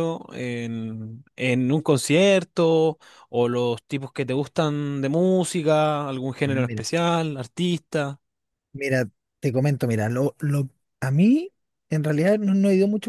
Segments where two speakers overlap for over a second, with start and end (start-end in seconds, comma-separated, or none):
none